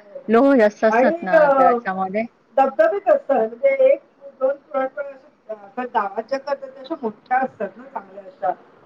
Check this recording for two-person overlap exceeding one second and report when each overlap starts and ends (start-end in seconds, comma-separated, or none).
none